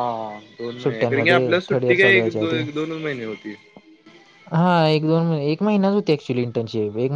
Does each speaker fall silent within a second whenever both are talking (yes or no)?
no